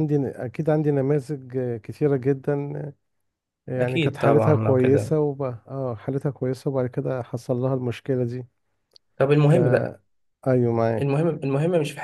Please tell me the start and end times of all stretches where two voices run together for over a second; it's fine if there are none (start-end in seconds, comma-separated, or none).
3.8-5.2